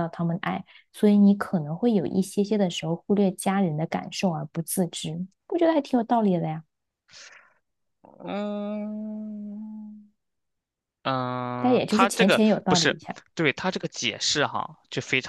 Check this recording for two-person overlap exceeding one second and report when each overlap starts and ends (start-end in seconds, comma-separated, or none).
11.6-13.0